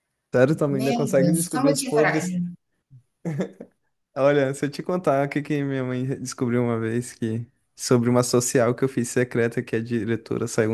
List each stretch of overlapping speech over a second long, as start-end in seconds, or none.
0.7-2.4